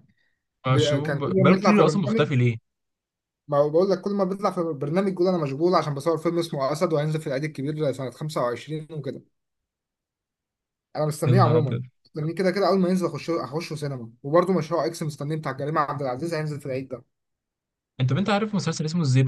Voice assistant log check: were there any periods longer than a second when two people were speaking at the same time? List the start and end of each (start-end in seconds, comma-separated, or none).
0.7-2.3